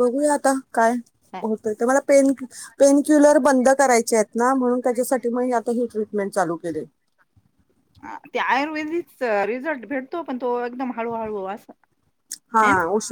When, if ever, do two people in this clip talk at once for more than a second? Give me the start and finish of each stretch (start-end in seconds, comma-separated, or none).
none